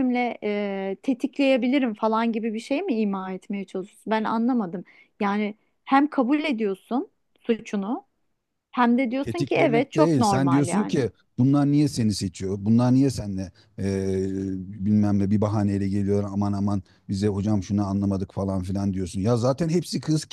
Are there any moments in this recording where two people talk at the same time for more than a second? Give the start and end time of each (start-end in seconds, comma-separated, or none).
9.2-11.1